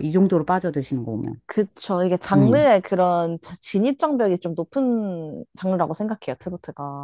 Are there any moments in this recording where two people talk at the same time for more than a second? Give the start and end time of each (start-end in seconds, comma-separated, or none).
none